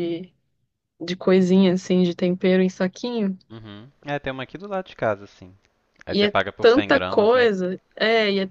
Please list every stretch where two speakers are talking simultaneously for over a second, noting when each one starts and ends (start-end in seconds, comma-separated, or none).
6.1-7.5